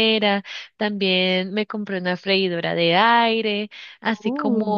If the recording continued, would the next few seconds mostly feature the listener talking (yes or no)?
no